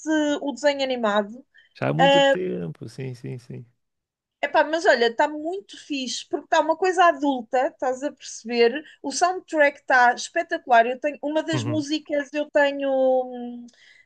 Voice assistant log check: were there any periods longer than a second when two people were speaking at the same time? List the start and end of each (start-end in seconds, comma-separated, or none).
none